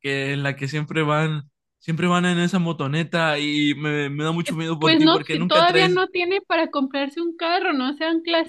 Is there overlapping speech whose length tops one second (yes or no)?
yes